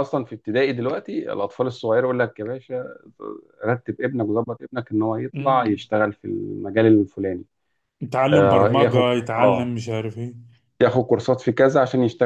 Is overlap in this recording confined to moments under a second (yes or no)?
no